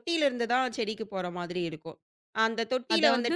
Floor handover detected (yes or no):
no